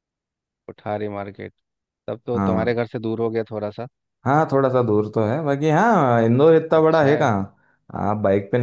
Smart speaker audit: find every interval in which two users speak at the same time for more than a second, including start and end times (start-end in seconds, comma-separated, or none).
none